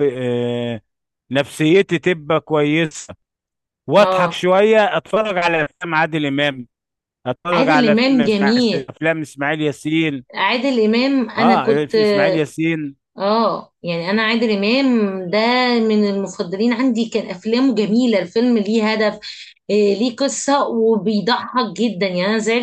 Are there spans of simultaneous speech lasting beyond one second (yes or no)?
yes